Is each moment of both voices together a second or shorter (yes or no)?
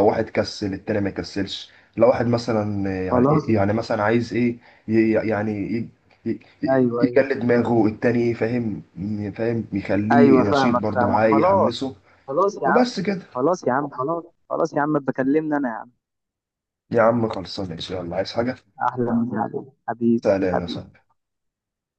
no